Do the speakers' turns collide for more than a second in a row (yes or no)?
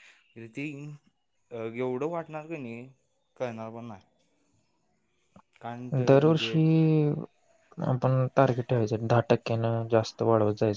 no